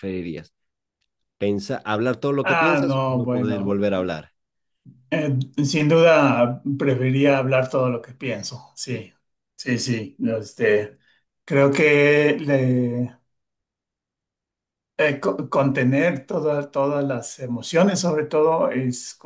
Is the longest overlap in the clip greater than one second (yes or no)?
yes